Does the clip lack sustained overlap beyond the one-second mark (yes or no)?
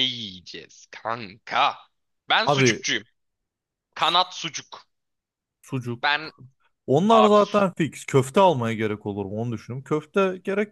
yes